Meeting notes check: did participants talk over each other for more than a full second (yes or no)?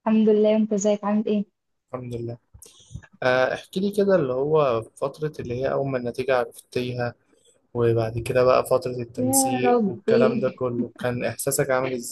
yes